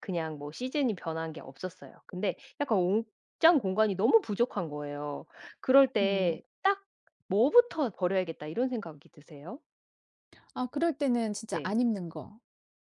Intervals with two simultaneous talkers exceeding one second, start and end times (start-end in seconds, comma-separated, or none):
none